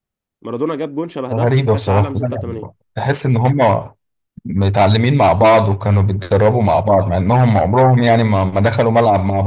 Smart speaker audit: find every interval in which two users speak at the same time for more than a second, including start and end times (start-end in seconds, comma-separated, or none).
1.3-2.7